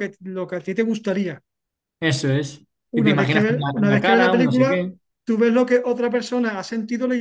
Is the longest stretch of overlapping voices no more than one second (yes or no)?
no